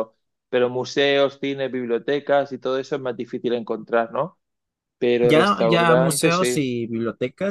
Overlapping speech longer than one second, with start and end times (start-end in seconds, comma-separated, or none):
5.2-6.7